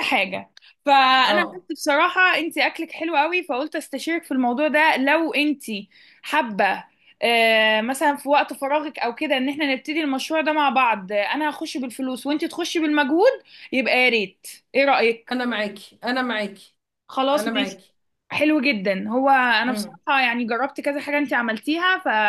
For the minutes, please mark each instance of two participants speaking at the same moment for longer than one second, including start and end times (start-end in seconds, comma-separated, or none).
none